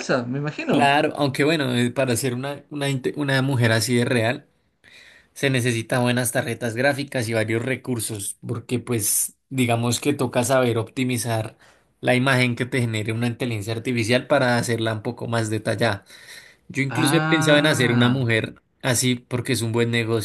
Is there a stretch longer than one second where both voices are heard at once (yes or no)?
yes